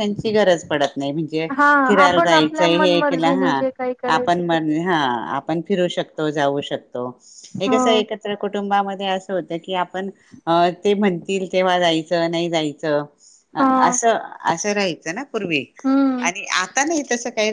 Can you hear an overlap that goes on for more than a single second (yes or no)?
yes